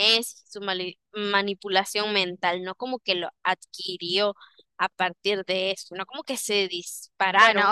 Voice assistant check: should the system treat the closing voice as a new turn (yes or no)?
yes